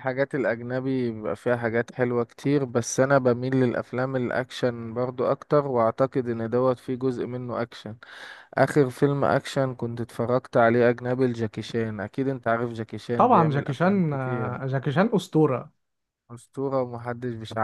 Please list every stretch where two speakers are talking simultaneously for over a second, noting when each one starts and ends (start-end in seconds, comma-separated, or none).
13.2-14.6